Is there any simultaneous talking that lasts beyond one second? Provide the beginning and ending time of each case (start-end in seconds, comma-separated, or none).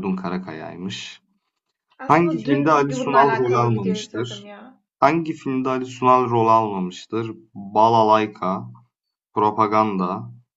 2.1-4.5